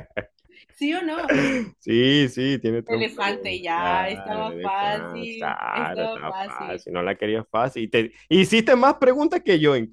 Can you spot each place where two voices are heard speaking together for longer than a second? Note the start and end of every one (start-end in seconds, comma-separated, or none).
2.9-6.8